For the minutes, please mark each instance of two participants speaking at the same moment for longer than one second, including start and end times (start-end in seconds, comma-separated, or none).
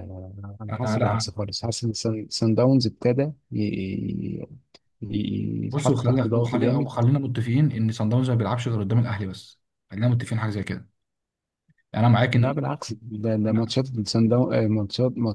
5.7-6.9